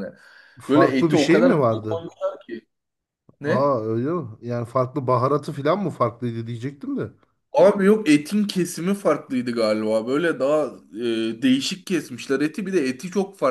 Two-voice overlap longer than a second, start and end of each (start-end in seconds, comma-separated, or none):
0.7-2.0